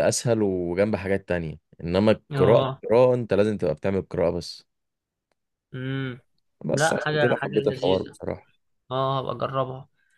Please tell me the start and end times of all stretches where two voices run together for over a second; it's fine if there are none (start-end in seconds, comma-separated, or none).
6.7-8.2